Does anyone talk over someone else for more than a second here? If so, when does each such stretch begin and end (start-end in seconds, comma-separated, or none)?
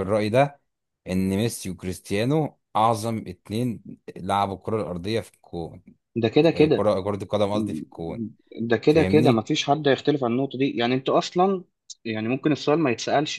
none